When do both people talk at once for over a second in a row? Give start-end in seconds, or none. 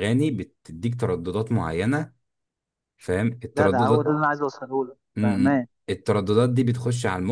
none